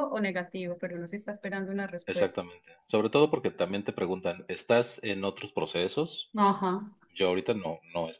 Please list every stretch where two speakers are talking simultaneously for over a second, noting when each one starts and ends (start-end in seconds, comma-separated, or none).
none